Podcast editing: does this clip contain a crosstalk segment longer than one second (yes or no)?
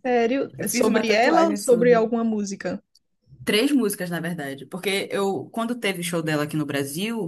yes